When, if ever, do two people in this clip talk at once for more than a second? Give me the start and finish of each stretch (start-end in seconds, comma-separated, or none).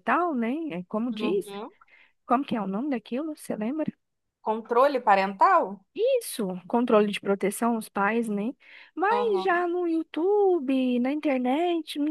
none